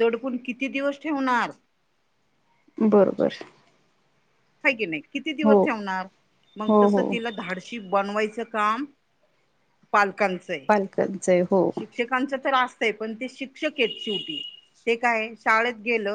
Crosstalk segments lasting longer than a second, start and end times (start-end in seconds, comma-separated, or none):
none